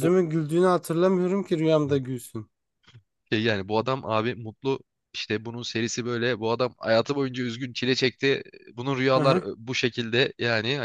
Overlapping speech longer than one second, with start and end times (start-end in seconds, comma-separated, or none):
none